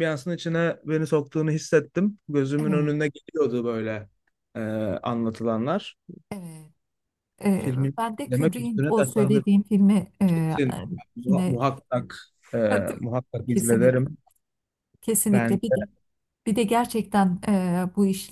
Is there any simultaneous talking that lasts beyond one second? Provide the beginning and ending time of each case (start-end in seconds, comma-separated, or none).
7.5-9.5